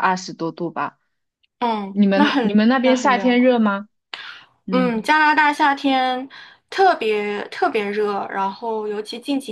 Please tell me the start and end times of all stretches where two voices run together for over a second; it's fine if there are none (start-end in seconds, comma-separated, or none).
1.9-3.6